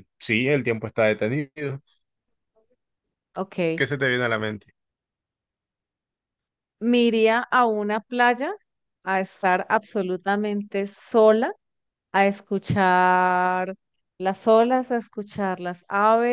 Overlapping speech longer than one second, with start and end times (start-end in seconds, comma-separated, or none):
none